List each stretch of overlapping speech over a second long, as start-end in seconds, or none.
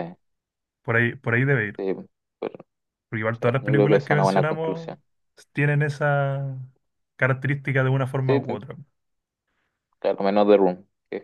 3.3-5.0